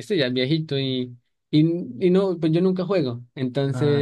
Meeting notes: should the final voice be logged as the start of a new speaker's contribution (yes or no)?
no